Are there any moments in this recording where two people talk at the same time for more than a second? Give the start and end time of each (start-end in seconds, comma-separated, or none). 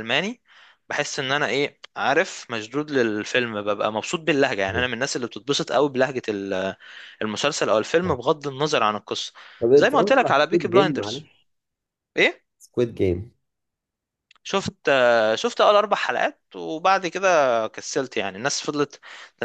9.8-11.3